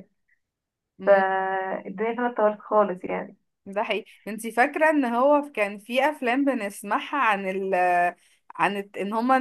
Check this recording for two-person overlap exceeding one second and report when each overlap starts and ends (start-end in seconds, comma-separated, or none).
none